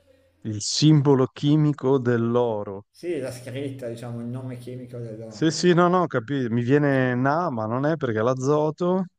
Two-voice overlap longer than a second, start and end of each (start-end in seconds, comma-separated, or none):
none